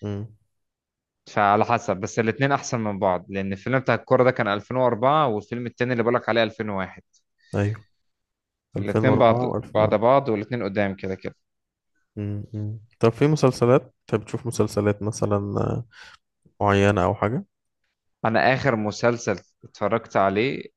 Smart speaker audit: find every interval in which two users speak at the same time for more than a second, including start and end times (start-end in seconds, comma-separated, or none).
8.8-10.0